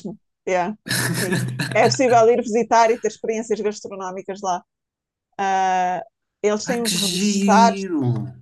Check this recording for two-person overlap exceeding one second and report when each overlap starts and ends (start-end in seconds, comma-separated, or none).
6.6-7.8